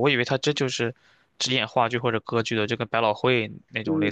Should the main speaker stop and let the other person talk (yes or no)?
yes